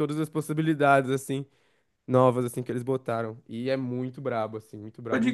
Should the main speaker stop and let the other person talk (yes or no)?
yes